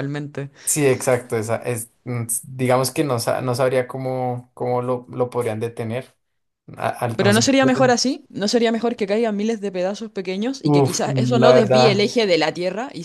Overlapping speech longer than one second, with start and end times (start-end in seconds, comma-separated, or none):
10.6-12.1